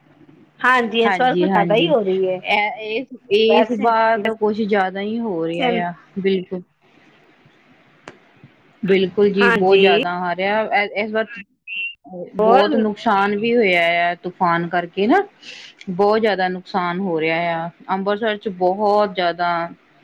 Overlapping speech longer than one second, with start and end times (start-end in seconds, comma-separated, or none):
none